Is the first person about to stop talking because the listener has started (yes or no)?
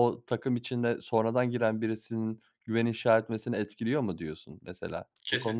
yes